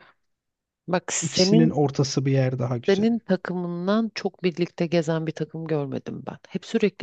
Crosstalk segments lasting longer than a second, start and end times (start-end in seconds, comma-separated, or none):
none